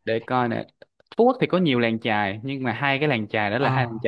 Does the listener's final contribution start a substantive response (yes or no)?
no